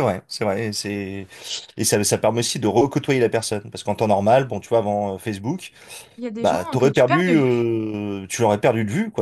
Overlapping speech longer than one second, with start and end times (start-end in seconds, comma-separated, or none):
6.4-7.7